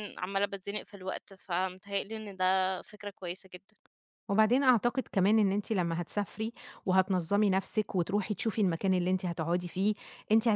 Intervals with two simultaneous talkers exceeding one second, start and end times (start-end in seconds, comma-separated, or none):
none